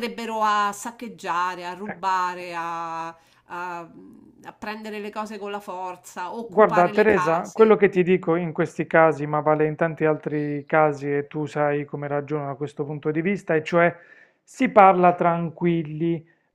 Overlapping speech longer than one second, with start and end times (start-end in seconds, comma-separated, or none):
6.4-7.8